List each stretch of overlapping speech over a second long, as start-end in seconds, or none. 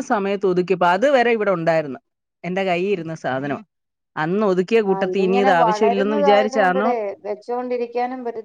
4.9-6.9